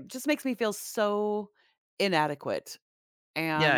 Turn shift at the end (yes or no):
no